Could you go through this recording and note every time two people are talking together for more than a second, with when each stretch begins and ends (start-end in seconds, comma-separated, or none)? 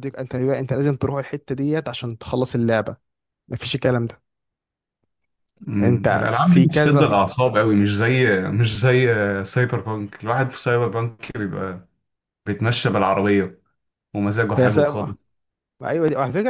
5.8-7.0